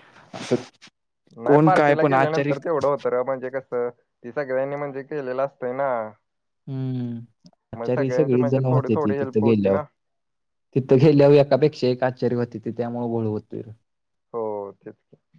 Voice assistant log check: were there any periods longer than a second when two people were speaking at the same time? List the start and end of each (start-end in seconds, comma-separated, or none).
7.8-9.8